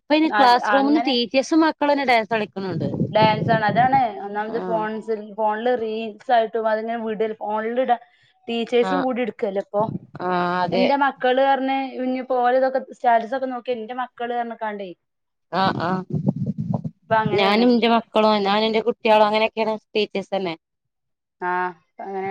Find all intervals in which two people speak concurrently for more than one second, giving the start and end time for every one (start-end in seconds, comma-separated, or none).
none